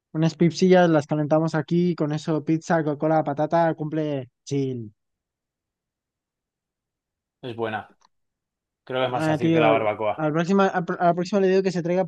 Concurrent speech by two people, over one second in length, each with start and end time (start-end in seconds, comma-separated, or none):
9.1-10.3